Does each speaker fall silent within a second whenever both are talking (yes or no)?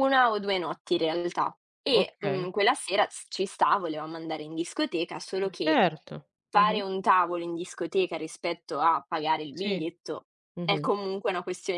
yes